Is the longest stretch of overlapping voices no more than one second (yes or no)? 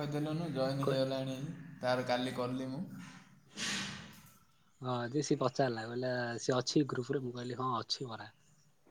yes